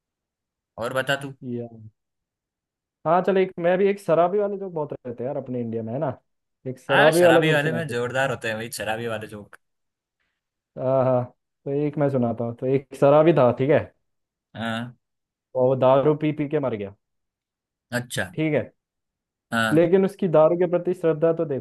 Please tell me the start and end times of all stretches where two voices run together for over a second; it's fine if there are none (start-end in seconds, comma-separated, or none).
6.9-8.1